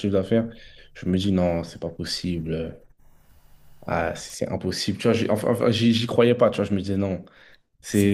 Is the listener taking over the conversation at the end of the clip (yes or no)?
yes